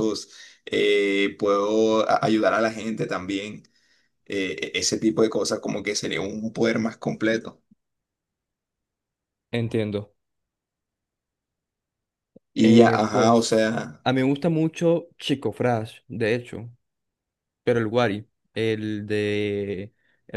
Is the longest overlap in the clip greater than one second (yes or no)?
yes